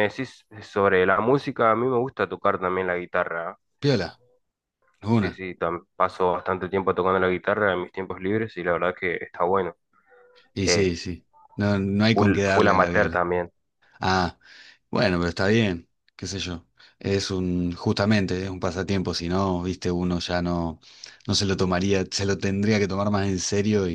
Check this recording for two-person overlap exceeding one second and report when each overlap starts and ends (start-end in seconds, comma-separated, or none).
12.1-13.3